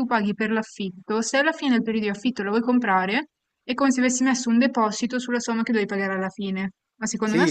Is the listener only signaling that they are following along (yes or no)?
no